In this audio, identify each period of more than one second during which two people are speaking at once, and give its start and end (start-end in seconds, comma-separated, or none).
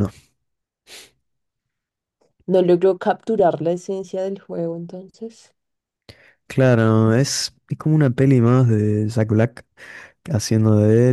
none